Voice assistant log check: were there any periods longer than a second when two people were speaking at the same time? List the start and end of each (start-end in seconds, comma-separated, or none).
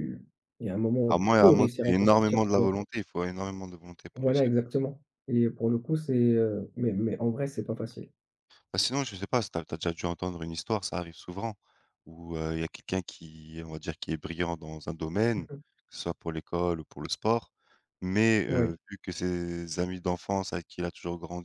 1.1-2.7